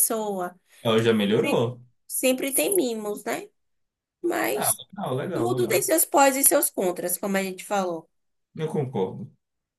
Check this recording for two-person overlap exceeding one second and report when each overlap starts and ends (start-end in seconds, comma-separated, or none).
none